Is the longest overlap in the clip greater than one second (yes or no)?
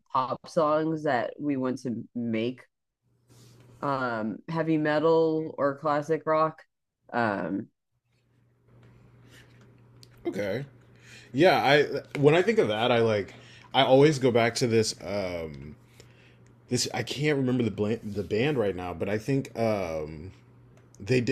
no